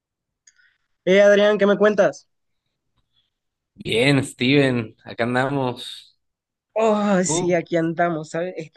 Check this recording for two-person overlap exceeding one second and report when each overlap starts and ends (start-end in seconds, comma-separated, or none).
none